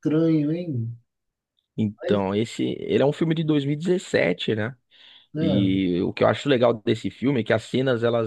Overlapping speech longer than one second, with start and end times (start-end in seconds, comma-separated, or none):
none